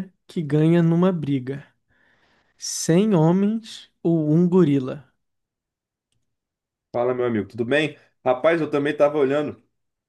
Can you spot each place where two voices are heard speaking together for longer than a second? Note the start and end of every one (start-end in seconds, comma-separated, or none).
none